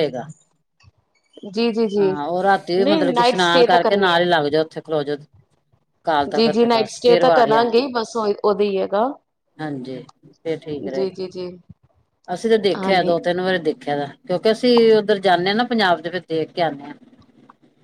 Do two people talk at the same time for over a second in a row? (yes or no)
yes